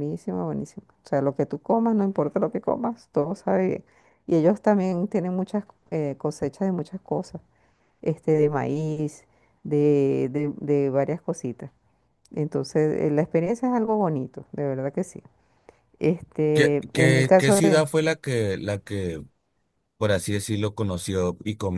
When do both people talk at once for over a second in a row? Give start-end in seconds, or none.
16.5-17.8